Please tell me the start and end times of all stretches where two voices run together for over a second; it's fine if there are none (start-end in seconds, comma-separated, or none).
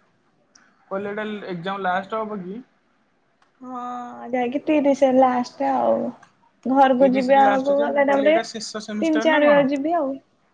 7.0-9.6